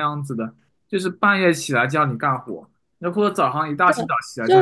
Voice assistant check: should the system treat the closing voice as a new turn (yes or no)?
yes